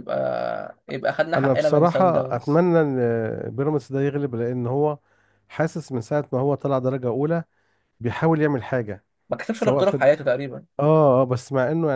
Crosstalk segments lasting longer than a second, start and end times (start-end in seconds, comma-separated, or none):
1.4-2.6